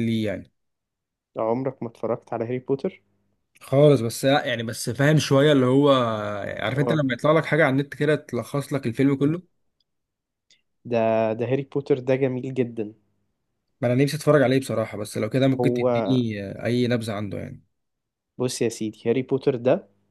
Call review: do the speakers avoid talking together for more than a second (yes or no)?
yes